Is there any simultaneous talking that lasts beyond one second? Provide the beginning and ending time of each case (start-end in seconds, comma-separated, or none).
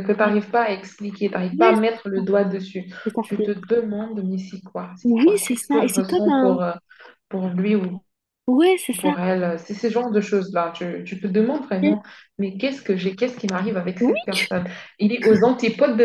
5.0-6.6